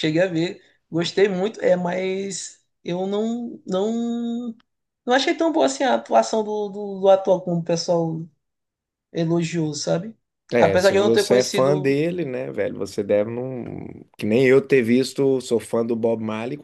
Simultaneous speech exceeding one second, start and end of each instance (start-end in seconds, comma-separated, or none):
10.6-12.0